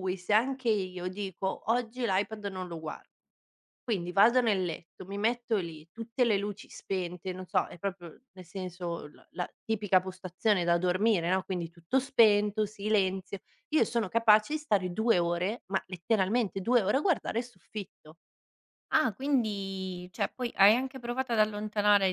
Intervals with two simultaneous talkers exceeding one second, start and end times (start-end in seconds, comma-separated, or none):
none